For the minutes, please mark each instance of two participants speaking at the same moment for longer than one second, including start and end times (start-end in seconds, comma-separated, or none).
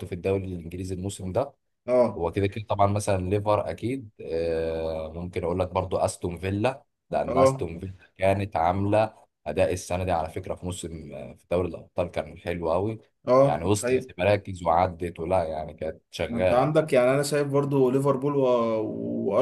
none